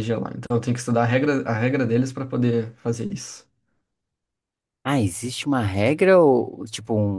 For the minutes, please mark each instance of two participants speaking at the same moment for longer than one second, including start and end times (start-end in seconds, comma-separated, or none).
none